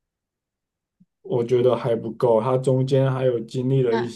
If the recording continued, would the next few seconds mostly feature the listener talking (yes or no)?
yes